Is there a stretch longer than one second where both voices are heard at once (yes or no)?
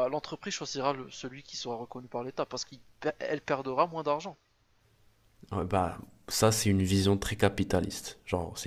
no